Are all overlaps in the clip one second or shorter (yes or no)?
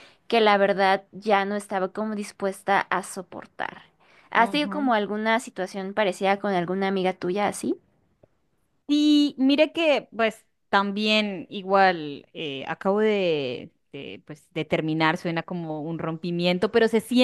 yes